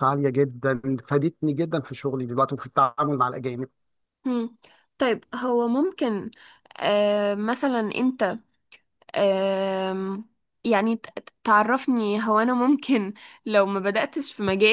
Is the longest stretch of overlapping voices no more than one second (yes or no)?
yes